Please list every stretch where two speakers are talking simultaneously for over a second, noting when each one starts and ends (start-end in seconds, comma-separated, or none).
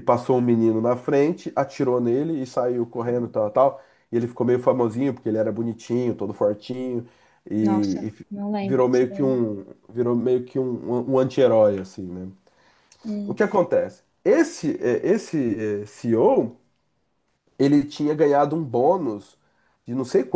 7.6-9.4